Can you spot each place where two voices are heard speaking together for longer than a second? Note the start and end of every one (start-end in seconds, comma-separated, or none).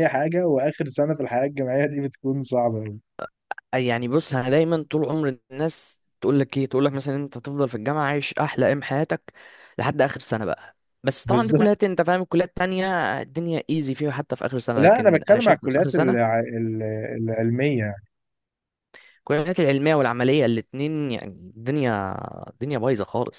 14.8-16.3